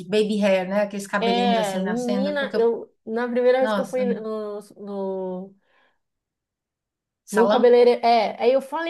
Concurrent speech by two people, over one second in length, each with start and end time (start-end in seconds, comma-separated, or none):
1.2-2.7